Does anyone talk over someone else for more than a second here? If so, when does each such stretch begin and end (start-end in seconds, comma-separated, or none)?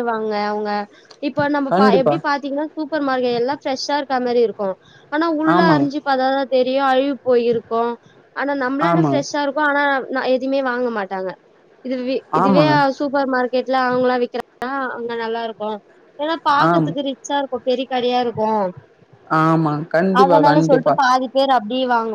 none